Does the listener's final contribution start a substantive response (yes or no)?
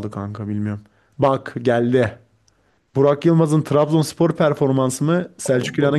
no